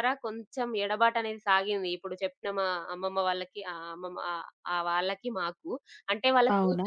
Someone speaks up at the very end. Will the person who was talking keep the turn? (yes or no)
yes